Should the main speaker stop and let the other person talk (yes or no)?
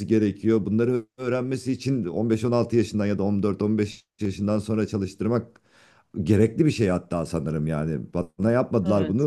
no